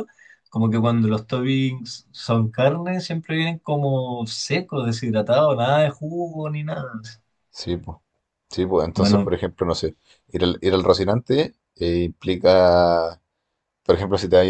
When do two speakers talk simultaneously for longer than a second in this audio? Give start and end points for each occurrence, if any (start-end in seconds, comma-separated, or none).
none